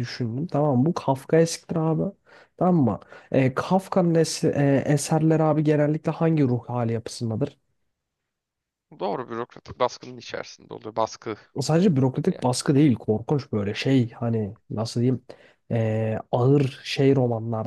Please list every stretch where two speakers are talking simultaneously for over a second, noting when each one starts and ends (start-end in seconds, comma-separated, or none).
none